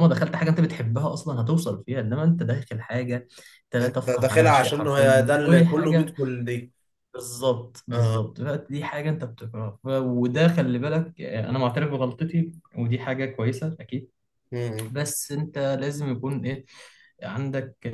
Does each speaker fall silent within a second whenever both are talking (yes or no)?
no